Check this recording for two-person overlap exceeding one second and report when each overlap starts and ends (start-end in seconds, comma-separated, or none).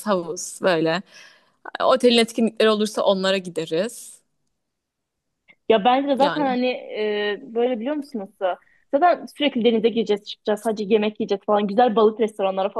none